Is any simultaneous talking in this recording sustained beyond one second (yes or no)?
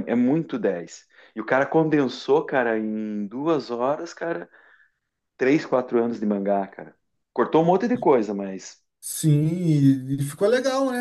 no